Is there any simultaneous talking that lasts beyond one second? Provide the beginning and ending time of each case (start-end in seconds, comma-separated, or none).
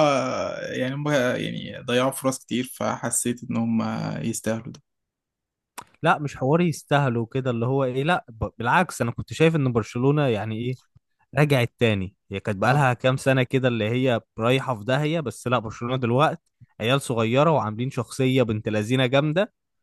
none